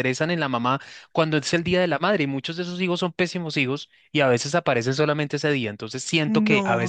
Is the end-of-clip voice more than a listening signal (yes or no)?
yes